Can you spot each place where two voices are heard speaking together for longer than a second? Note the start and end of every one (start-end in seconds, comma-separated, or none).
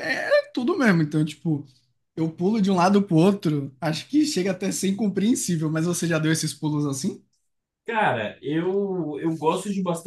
none